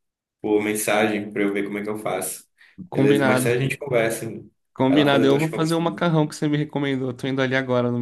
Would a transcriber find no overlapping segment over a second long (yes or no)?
no